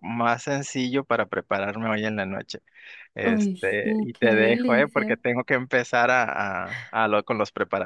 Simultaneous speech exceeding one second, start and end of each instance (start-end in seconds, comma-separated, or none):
3.2-5.2